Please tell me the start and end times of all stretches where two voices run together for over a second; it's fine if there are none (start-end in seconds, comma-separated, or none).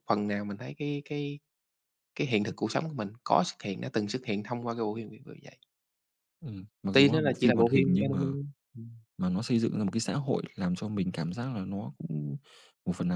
6.9-8.3